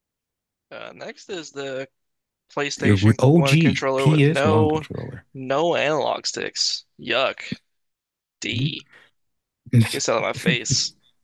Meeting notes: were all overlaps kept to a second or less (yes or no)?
no